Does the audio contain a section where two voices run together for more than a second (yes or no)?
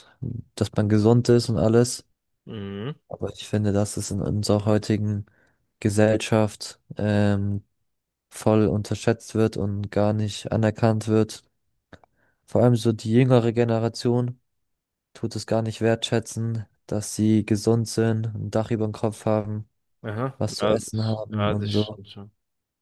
yes